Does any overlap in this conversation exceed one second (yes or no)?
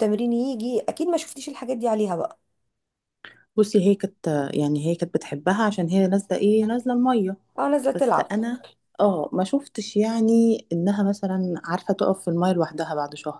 no